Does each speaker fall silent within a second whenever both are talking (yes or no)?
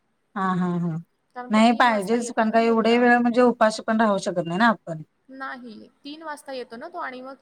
no